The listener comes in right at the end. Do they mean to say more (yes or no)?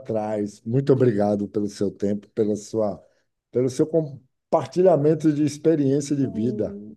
yes